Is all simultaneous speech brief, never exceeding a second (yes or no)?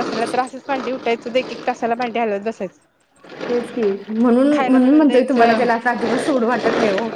yes